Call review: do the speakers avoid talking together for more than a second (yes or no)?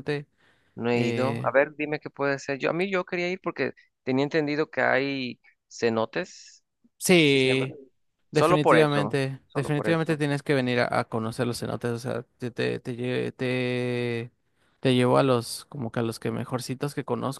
no